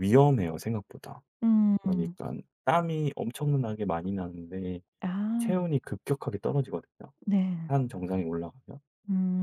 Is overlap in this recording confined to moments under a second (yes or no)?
yes